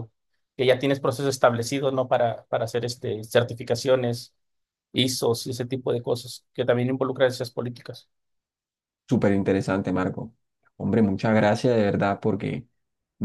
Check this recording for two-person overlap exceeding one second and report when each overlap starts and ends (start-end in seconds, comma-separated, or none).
none